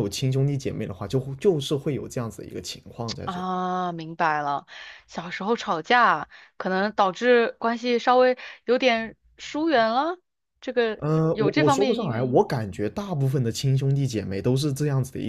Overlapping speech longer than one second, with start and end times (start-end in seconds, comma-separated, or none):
11.0-12.4